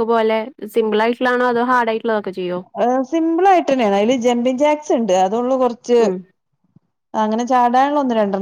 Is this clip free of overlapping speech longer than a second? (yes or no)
yes